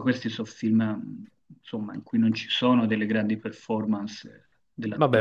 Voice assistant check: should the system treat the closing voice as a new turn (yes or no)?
yes